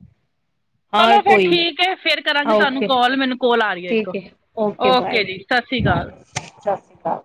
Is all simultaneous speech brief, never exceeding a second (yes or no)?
yes